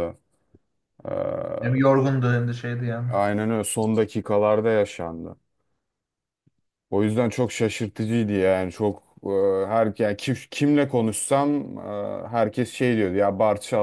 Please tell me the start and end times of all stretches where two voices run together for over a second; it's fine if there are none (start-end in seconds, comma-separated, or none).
none